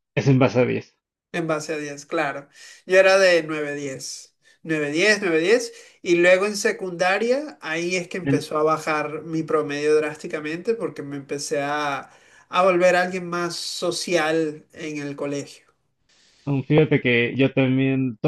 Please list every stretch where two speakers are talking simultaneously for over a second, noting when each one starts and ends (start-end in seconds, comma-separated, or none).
none